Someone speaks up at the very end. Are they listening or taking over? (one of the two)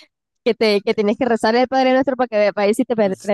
taking over